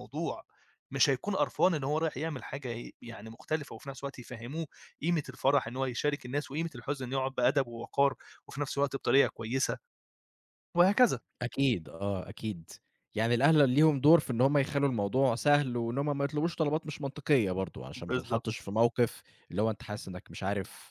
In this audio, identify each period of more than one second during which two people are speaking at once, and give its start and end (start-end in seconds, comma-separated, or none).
none